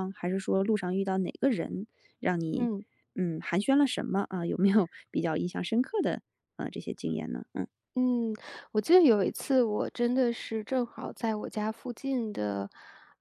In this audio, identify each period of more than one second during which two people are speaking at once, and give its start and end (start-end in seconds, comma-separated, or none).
none